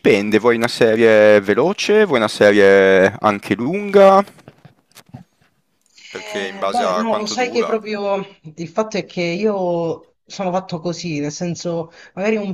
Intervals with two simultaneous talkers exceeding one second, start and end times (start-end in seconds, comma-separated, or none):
6.1-7.8